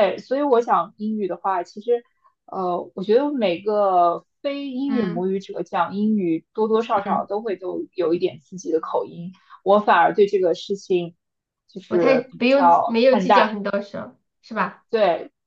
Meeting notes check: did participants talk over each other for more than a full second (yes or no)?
yes